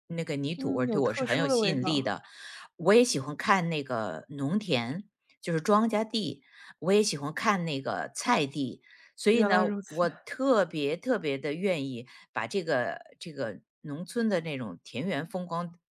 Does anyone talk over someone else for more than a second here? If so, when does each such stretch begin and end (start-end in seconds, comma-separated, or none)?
0.6-2.1